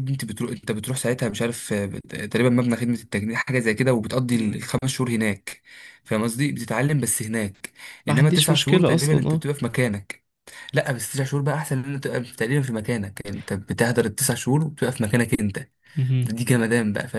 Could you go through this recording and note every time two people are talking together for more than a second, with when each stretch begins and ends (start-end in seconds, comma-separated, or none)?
8.1-9.4